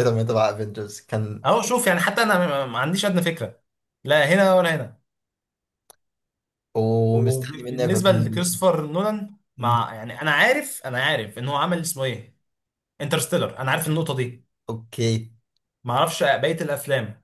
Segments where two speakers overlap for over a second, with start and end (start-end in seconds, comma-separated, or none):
7.1-8.6